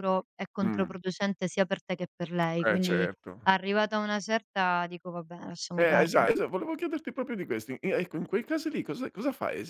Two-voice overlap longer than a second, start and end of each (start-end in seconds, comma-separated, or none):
none